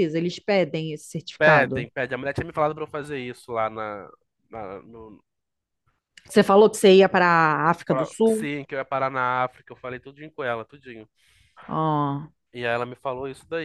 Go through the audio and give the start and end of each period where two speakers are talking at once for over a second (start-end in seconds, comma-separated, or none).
none